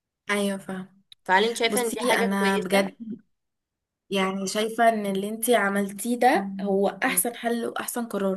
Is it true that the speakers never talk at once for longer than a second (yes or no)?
no